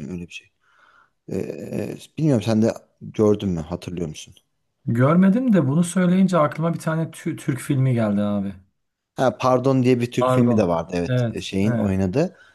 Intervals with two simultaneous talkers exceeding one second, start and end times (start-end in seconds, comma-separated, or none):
10.2-11.9